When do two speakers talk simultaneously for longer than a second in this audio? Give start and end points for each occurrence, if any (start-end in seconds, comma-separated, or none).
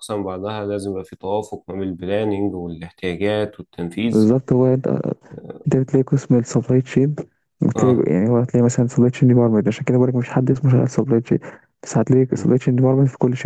none